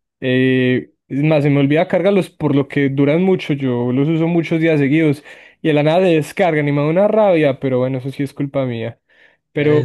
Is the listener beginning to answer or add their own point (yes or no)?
yes